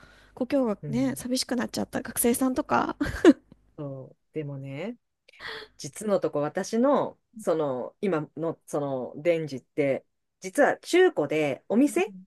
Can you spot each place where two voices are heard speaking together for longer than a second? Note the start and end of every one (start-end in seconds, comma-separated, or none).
none